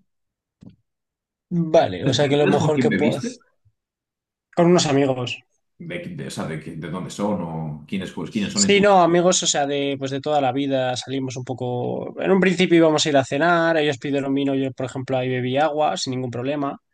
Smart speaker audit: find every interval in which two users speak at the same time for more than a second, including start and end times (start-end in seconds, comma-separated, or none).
2.0-3.4